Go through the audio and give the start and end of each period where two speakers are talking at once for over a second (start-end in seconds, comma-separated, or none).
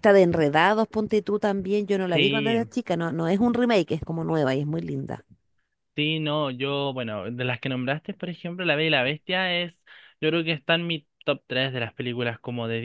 none